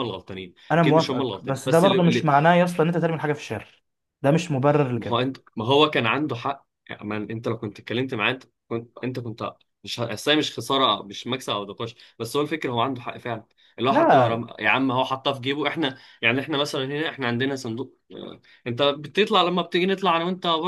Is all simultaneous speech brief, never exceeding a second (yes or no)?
no